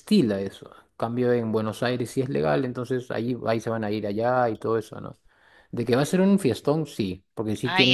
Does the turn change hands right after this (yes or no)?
yes